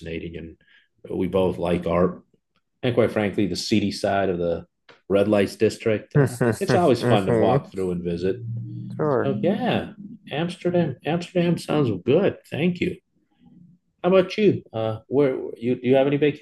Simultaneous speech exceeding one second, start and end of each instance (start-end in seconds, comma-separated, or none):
6.1-7.6